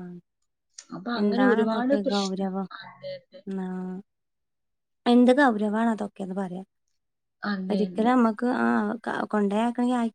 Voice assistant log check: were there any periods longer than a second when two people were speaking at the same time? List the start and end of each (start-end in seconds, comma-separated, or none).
1.2-2.7